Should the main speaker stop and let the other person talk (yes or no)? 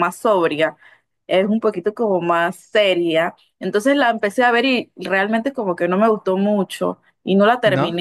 no